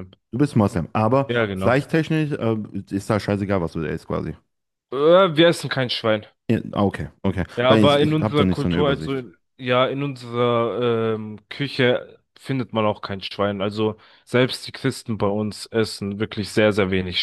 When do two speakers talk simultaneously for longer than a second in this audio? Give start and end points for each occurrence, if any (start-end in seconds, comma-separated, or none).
7.6-9.3